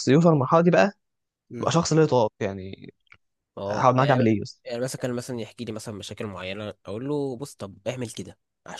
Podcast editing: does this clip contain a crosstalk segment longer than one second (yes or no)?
no